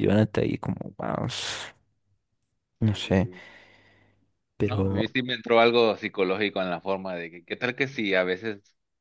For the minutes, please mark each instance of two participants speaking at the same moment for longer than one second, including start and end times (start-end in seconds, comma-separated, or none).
none